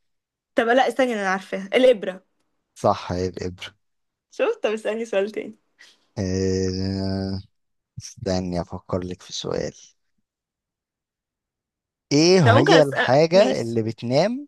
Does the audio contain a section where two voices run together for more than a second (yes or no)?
yes